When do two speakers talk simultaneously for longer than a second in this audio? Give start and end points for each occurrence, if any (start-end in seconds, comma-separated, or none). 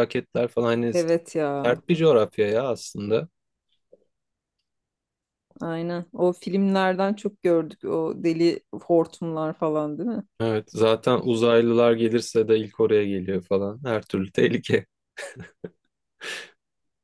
none